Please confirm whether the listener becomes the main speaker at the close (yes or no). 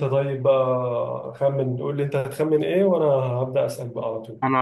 no